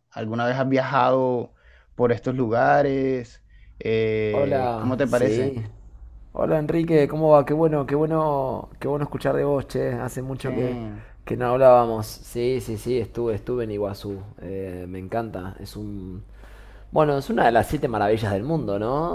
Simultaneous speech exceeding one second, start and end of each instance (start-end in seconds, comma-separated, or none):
4.3-5.5